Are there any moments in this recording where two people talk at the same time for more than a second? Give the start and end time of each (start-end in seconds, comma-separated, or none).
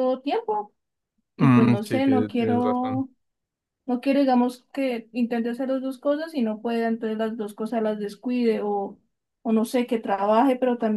1.4-3.0